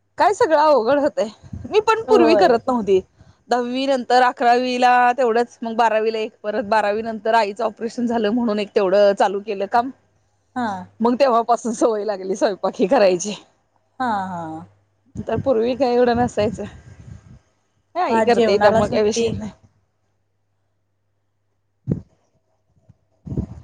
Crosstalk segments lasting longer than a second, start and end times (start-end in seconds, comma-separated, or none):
18.1-19.3